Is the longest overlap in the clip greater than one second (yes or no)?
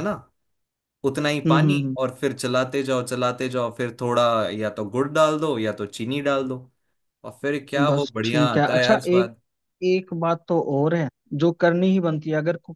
yes